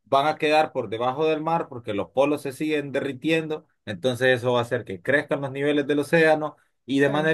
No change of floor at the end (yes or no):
yes